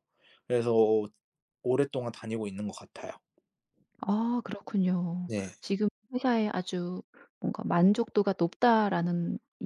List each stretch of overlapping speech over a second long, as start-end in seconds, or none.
none